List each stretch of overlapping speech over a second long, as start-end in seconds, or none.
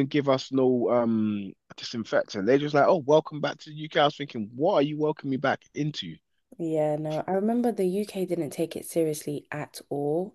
none